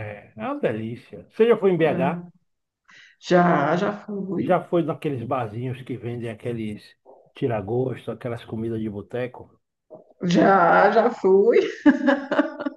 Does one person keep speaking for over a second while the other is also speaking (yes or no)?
no